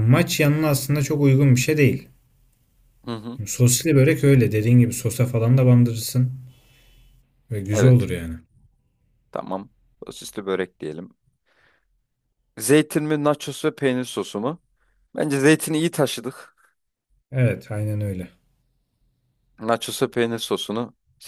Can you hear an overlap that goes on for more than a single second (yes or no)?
no